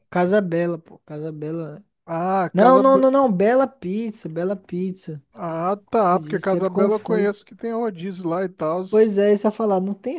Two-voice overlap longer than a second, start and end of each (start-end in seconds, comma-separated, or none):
6.1-7.3